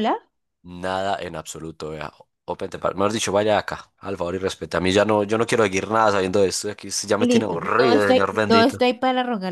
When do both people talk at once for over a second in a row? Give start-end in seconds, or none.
7.2-8.8